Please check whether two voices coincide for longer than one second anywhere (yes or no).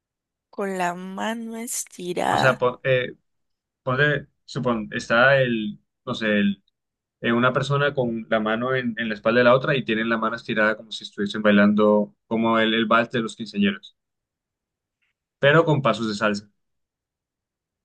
no